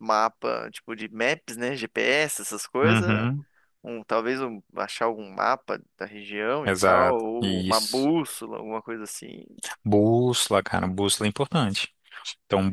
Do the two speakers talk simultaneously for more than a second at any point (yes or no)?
yes